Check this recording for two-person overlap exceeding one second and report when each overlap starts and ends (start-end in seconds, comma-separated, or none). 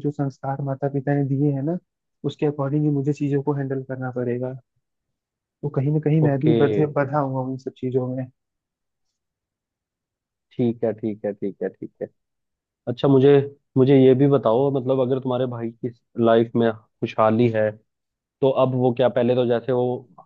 none